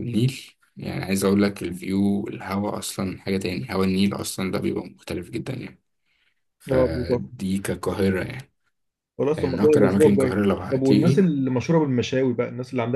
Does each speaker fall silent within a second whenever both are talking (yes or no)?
no